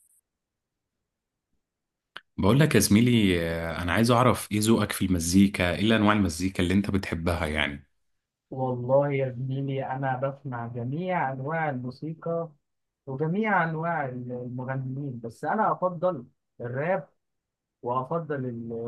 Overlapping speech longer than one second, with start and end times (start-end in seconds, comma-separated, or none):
none